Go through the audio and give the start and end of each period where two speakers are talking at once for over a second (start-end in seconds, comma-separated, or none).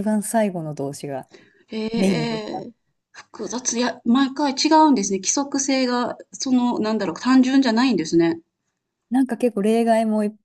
none